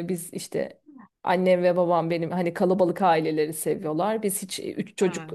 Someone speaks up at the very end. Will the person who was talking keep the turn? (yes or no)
yes